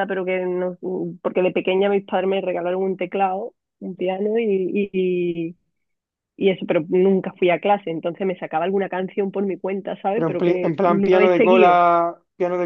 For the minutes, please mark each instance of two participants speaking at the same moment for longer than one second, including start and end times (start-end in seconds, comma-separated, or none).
10.1-11.8